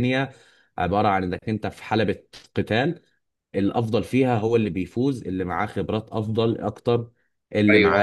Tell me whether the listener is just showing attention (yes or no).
no